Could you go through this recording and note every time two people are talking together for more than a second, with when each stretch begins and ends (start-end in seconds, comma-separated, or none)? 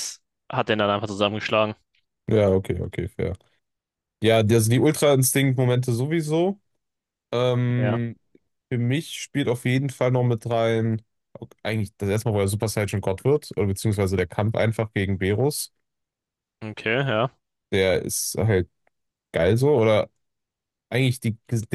none